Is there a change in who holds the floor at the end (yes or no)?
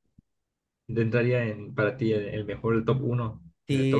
yes